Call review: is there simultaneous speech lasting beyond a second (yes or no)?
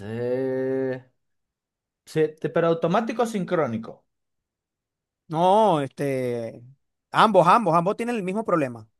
no